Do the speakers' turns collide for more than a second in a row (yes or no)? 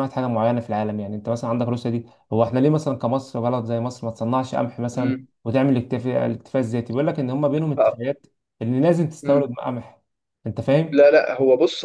no